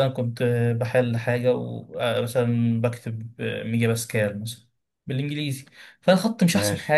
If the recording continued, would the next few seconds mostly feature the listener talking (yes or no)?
no